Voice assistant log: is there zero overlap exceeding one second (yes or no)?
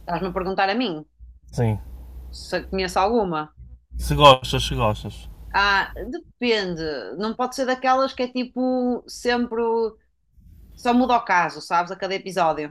yes